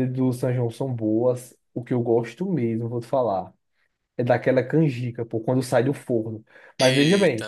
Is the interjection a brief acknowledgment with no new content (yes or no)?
yes